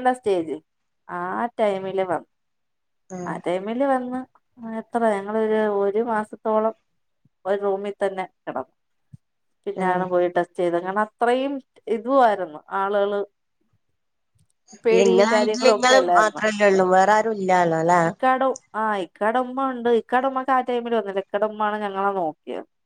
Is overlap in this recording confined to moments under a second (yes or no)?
no